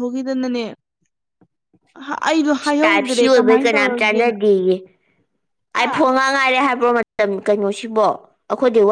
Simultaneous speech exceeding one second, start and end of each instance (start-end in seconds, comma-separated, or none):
2.8-4.3